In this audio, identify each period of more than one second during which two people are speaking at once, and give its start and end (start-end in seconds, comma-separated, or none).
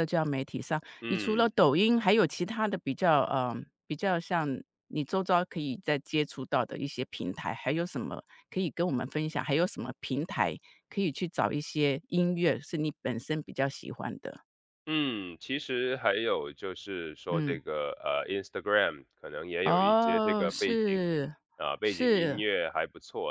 19.6-21.0